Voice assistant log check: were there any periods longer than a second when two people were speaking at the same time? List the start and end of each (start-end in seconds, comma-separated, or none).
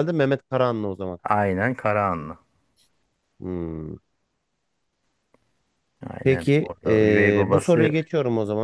6.2-8.0